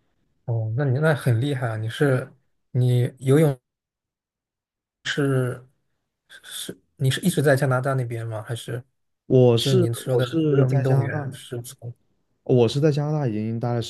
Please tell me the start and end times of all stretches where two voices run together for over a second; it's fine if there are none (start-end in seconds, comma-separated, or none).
9.6-11.3